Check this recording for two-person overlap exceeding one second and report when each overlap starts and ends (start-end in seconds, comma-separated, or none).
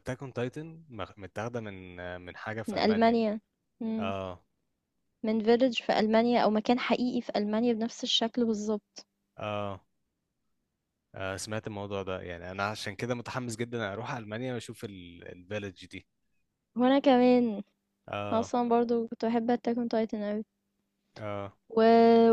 none